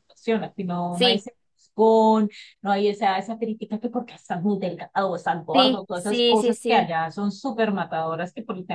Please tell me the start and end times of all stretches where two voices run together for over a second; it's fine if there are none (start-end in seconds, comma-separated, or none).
5.5-6.9